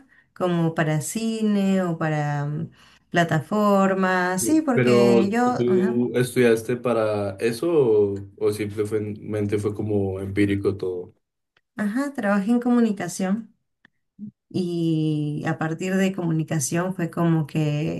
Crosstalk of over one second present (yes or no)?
yes